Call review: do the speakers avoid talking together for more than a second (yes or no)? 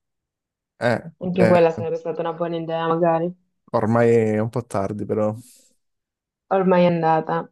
yes